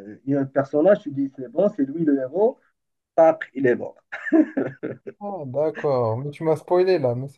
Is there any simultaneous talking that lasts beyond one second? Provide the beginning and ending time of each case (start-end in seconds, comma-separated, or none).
none